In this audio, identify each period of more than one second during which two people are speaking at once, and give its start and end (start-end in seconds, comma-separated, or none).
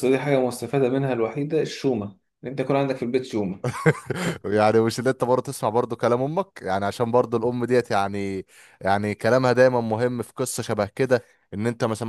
none